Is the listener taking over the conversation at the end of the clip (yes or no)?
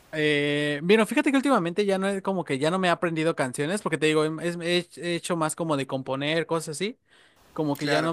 no